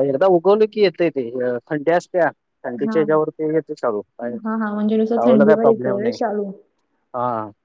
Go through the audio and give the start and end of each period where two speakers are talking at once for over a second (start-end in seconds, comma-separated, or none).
4.4-6.2